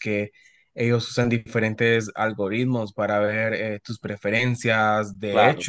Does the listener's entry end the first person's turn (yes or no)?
no